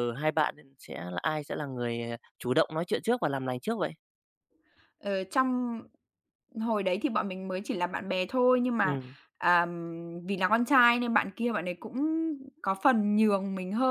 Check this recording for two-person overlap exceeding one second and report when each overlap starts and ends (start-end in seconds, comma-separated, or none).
none